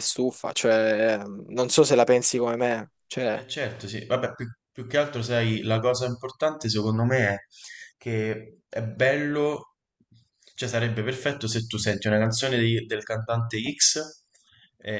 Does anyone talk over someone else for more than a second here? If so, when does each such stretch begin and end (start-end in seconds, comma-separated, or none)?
none